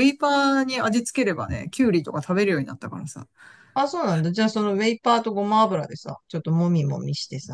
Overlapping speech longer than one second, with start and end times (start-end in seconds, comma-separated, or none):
none